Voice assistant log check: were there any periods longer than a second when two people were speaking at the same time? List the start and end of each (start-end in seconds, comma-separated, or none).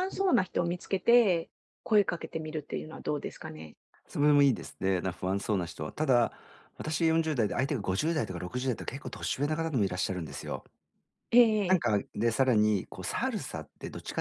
none